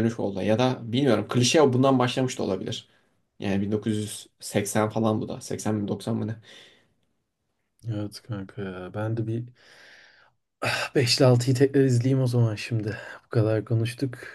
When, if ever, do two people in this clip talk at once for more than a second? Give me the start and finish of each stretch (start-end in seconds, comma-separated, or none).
none